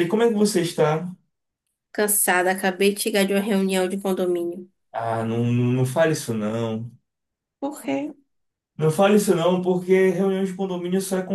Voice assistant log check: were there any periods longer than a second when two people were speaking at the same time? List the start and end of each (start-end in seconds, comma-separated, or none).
none